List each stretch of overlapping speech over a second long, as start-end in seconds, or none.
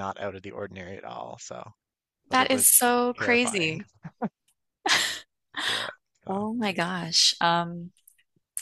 2.3-3.8